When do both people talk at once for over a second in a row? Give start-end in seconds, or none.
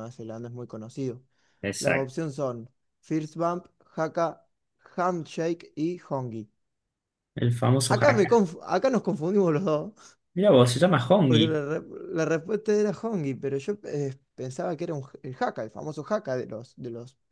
none